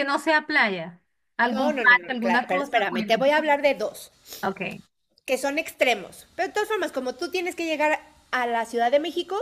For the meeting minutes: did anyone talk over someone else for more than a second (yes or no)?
yes